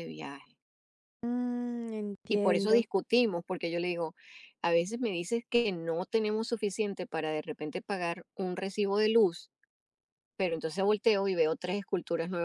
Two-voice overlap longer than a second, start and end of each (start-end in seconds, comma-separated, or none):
none